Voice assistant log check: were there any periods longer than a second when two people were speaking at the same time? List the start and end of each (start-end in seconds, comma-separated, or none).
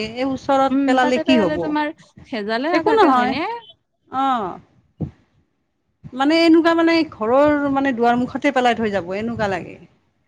none